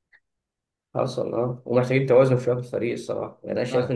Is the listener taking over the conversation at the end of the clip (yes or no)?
no